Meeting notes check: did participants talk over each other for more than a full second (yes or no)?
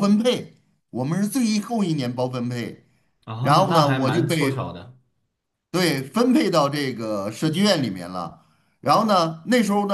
yes